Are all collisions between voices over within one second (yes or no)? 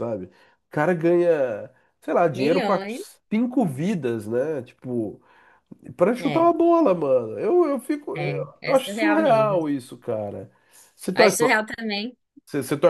no